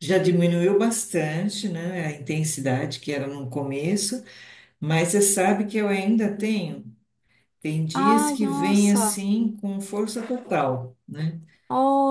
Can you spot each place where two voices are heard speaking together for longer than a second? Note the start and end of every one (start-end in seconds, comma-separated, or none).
7.9-9.2